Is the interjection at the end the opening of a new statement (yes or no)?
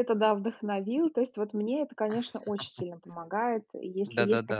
no